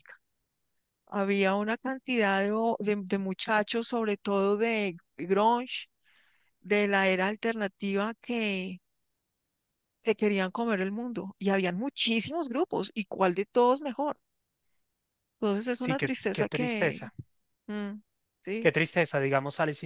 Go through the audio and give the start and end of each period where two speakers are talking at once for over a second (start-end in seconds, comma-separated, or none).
15.7-17.1